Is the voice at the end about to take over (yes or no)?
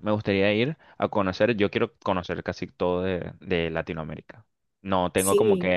no